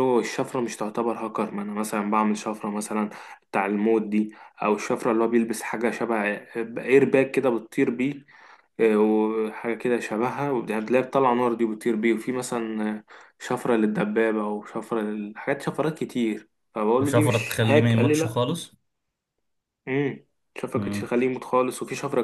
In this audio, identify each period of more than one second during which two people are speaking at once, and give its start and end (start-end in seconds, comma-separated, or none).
17.0-18.4